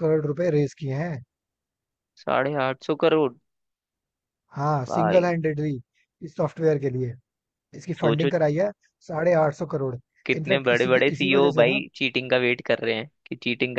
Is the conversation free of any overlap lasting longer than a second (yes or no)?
no